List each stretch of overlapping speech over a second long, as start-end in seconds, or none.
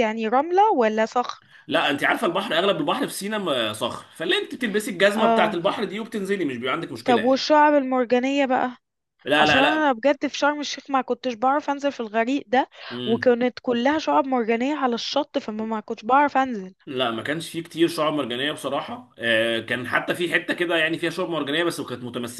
none